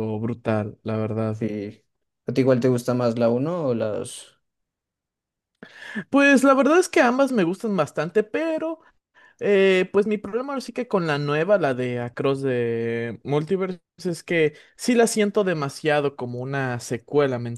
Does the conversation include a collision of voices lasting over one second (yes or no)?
no